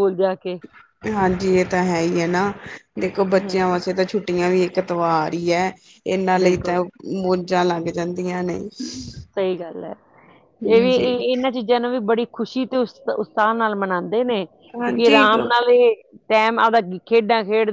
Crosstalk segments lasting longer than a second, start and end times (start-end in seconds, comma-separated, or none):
none